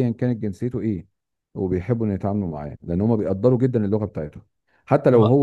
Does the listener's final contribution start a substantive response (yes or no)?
no